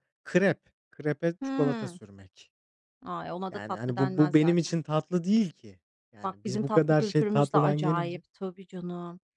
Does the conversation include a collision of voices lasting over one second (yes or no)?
yes